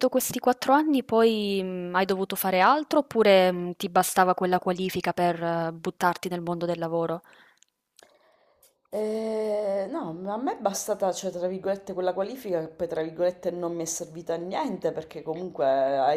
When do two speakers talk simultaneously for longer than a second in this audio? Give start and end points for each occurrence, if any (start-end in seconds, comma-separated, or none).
none